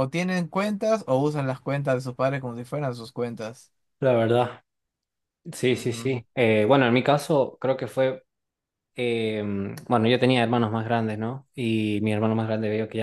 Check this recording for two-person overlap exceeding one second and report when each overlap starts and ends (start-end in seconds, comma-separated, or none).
none